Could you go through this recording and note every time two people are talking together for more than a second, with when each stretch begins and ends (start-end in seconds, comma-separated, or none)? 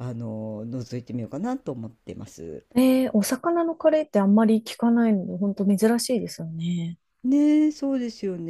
none